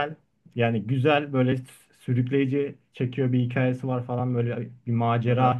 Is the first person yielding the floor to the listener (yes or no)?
no